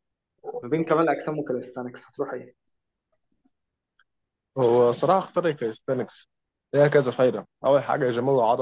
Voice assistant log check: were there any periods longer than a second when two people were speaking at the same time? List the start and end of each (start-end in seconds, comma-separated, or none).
none